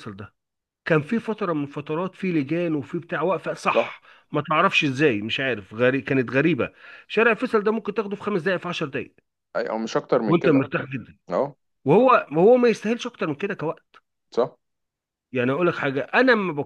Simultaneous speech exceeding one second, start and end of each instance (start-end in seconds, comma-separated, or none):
none